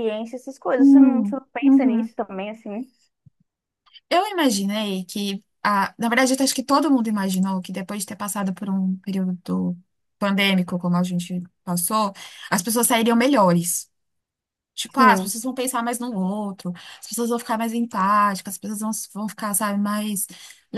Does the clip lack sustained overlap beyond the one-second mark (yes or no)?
no